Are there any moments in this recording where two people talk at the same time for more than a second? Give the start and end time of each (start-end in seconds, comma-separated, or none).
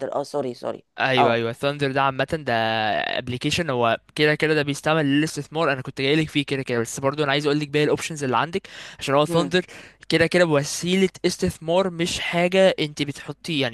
none